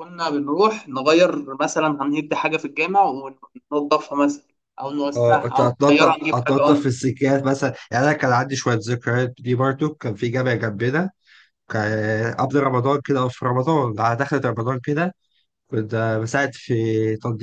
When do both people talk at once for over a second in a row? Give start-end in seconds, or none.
5.2-6.9